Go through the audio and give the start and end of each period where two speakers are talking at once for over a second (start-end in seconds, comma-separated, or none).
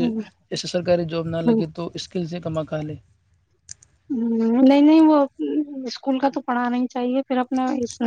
none